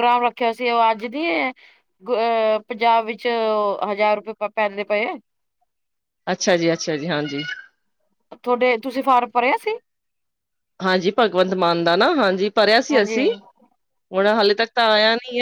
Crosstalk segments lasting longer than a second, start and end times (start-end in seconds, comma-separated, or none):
none